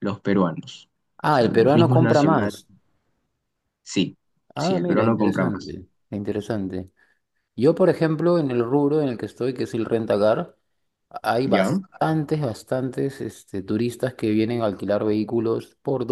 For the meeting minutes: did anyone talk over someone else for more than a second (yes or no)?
yes